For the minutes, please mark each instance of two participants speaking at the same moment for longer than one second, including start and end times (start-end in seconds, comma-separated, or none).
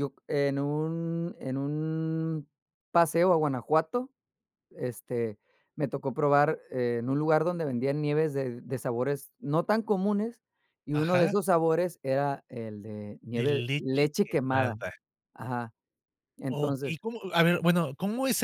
13.3-14.7